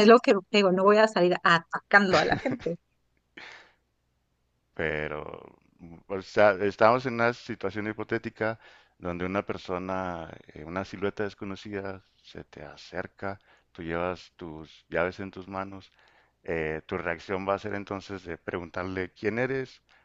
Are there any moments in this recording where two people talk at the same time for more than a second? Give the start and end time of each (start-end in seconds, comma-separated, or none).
none